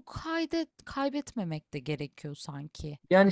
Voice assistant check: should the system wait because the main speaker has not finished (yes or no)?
no